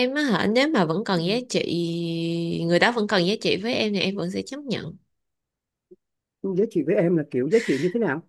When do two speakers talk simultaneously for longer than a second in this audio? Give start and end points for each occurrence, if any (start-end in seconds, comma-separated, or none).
none